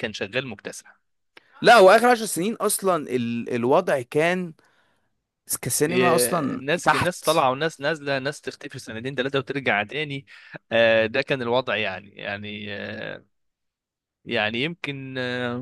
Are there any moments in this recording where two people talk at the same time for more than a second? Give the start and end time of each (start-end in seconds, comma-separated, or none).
5.9-7.2